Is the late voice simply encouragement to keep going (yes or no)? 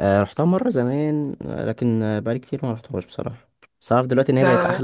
yes